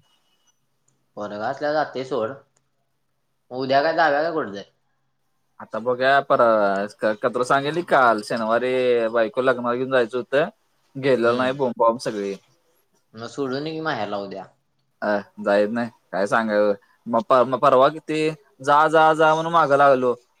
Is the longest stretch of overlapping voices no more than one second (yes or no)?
yes